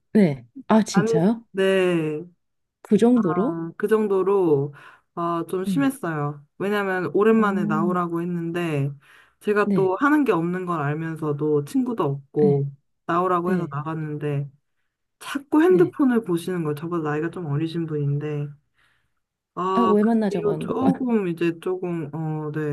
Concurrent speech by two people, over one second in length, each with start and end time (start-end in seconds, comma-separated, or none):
19.7-21.0